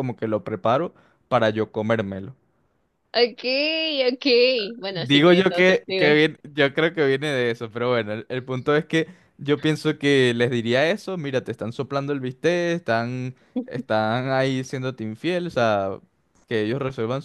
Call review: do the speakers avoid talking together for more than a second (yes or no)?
no